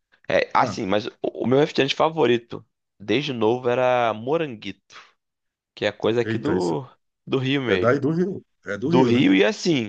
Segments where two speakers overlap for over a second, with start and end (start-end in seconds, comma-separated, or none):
none